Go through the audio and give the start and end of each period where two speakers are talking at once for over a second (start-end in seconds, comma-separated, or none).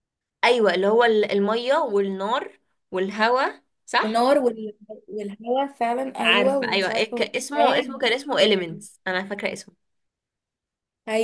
6.2-8.8